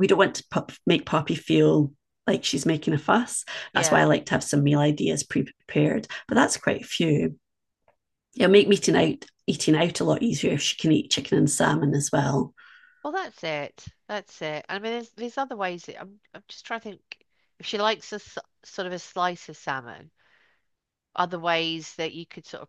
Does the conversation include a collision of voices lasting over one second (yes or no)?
no